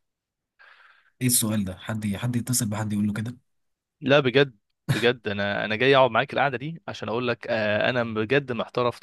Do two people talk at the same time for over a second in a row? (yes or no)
no